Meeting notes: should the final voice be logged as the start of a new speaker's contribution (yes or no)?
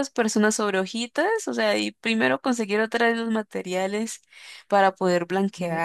yes